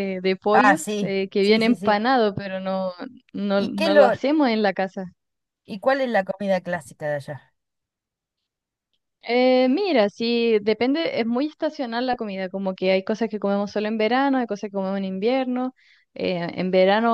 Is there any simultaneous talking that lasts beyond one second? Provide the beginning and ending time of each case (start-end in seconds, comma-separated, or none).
0.5-2.0